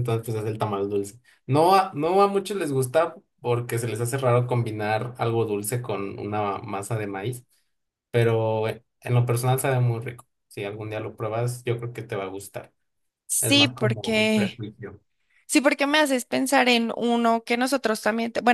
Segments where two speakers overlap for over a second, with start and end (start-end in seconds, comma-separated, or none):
13.4-14.6